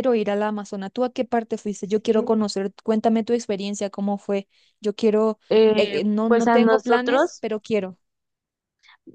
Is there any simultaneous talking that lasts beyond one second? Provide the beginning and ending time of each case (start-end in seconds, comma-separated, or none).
5.8-7.4